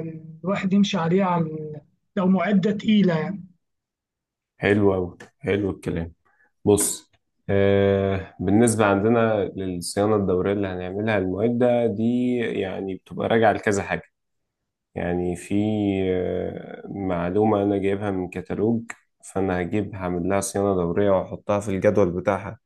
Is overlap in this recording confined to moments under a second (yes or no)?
yes